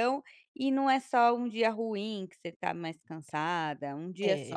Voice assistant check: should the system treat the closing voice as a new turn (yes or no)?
yes